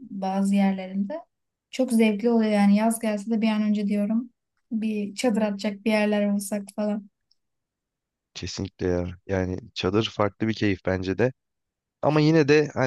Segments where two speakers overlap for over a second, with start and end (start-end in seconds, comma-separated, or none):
none